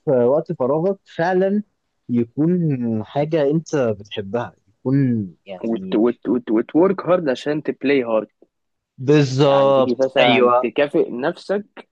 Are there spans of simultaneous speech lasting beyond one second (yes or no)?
yes